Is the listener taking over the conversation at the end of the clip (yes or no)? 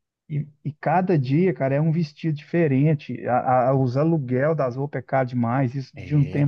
no